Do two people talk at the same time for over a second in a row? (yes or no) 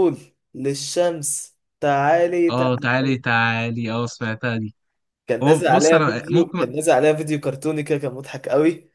yes